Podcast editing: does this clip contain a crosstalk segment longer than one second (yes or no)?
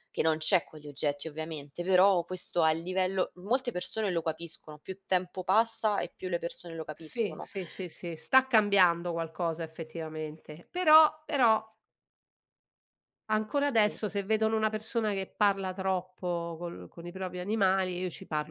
no